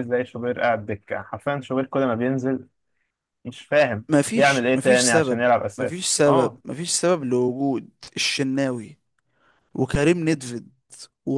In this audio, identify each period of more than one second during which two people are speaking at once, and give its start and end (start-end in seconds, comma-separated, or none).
4.1-6.6